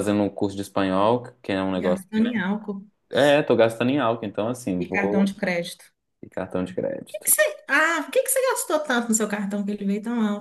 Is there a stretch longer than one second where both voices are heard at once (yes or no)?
no